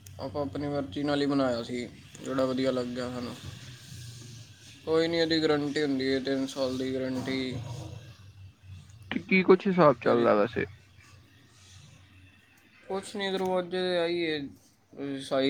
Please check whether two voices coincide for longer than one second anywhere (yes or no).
no